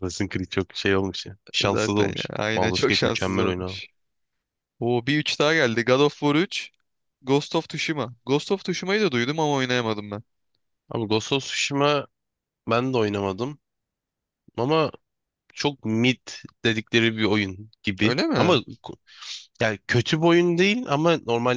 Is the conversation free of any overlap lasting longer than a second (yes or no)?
no